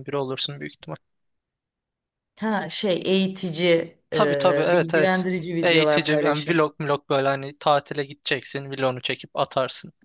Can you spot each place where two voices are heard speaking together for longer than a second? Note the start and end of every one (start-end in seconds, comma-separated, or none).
4.1-6.6